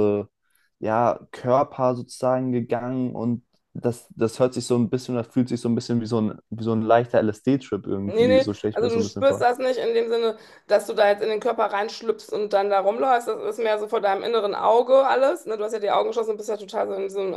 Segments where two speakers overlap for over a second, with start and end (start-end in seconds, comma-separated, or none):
8.0-9.5